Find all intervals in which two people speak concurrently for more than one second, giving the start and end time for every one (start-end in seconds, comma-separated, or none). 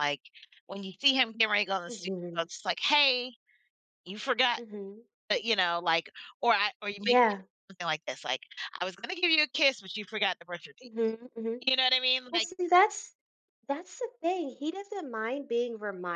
none